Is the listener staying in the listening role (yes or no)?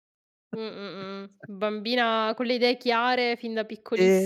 no